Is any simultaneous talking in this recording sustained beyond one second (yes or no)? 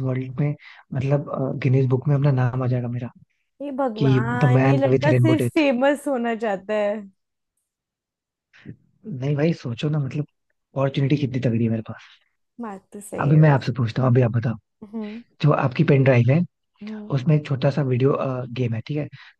yes